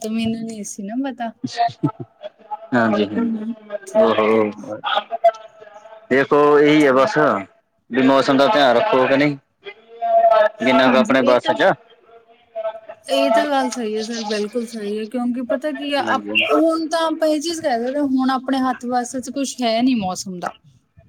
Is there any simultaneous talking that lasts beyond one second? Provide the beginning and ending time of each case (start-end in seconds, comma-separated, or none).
none